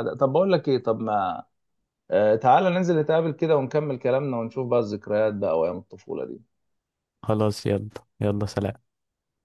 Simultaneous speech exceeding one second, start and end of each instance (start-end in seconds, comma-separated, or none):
none